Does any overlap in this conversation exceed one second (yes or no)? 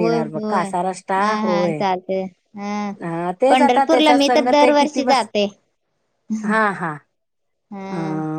yes